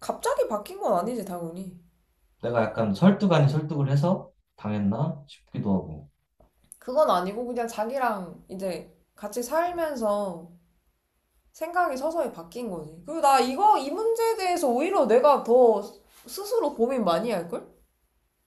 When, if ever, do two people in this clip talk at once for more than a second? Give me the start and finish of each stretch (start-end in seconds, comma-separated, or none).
none